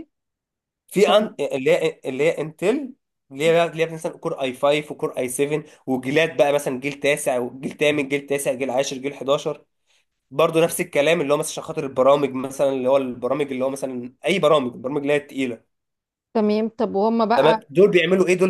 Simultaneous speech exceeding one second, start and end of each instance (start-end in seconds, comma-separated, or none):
none